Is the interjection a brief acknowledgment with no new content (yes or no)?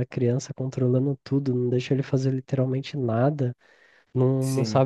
yes